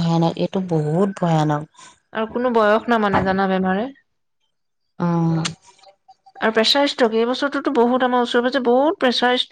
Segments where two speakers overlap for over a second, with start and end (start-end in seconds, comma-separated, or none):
none